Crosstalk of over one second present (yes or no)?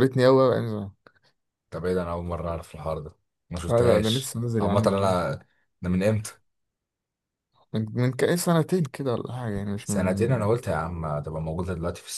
yes